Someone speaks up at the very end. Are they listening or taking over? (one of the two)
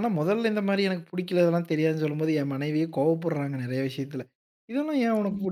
listening